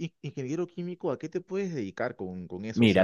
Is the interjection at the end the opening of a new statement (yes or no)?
yes